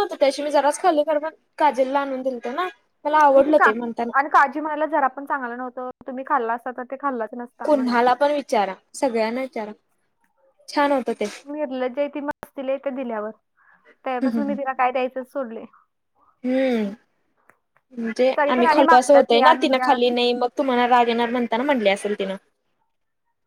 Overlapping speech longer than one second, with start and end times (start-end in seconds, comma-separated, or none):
18.4-19.9